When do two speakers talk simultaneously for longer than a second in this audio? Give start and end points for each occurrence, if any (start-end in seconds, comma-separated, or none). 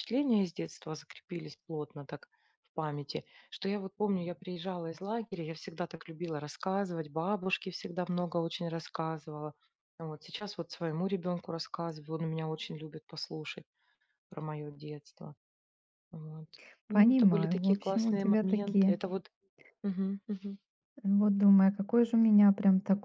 16.9-19.0